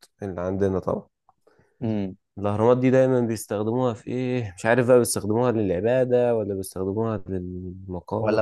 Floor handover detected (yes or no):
yes